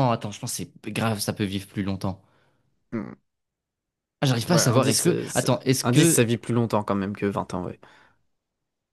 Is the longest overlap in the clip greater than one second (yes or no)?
yes